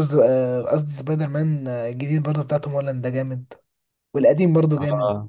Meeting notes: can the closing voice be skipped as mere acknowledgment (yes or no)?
yes